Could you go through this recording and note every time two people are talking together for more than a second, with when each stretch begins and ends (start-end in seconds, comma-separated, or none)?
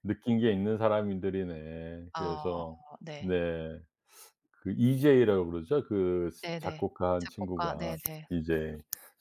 6.4-8.3